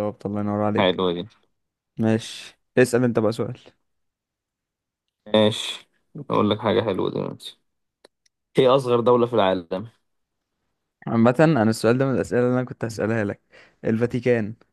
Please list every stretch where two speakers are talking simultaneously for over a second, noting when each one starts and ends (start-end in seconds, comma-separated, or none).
none